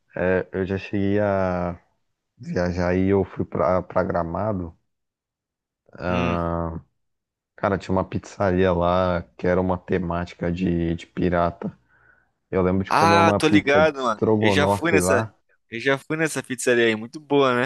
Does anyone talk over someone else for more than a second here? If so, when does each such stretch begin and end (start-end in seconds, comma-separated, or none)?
12.9-15.3